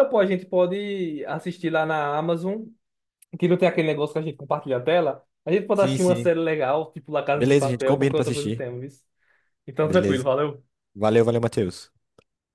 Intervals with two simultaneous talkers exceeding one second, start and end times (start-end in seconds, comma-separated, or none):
7.3-8.6